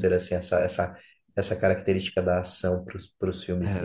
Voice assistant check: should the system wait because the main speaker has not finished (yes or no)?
no